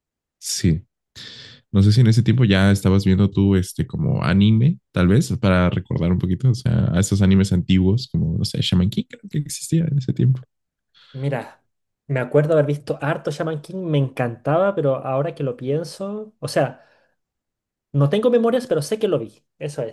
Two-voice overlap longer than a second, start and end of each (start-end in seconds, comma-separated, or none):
none